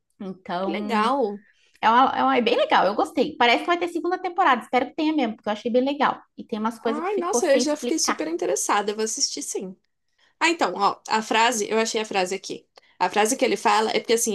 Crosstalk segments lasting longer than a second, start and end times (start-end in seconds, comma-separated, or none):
6.9-8.2